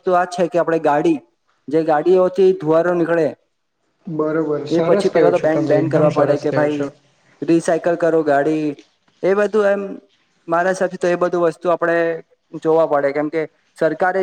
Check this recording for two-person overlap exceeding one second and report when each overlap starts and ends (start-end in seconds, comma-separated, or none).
4.2-6.8